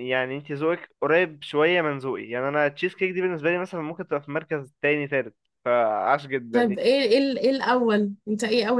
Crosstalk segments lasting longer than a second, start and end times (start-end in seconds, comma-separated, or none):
none